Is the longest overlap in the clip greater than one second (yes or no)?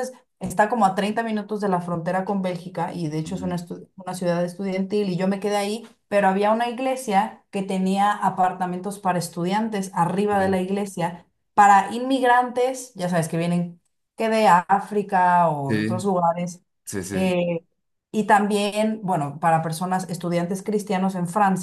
no